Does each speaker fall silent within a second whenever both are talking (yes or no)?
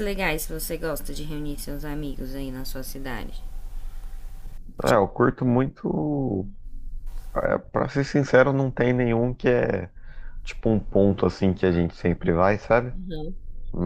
yes